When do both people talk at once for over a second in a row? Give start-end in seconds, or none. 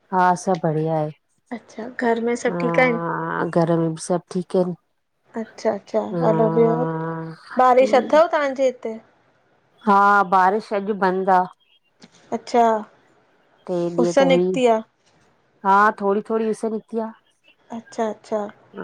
1.5-3.0